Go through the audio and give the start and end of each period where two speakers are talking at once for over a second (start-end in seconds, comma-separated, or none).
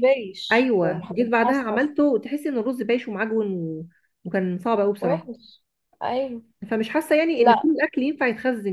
0.5-1.9